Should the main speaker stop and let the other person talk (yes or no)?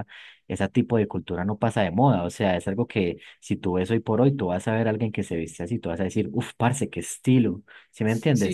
yes